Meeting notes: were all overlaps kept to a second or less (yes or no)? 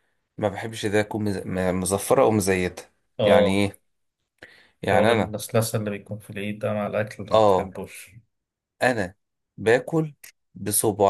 yes